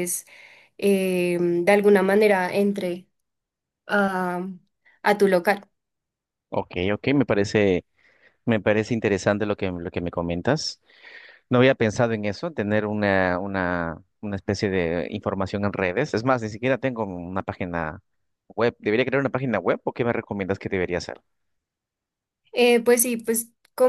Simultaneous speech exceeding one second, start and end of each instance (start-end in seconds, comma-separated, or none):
none